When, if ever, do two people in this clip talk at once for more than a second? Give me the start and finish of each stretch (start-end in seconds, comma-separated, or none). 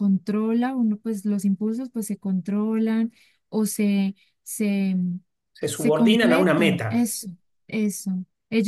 5.7-7.1